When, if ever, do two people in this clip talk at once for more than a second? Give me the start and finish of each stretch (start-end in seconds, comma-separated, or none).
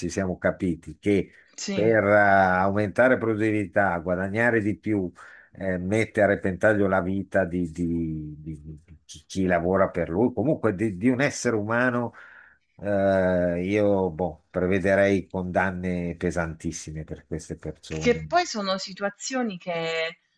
none